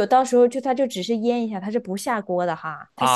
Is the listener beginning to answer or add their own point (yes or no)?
yes